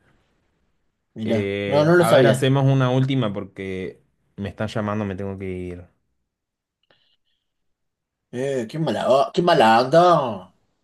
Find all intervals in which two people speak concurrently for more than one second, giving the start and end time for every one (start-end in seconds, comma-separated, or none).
1.2-2.5